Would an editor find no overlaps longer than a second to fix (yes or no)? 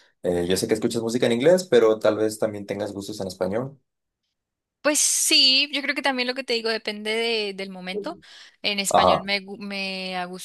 yes